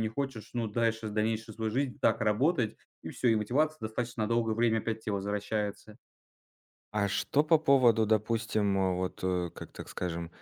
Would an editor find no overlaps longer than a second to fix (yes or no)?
yes